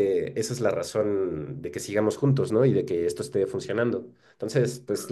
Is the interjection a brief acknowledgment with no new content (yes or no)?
yes